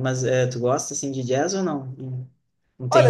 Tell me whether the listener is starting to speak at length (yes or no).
yes